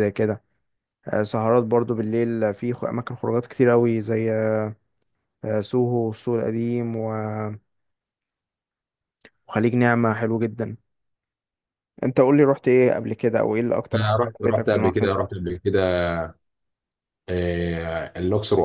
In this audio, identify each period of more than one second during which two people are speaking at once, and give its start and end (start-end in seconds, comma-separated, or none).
13.9-15.2